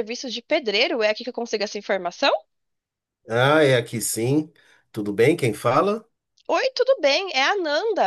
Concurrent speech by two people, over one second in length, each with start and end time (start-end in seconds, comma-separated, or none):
none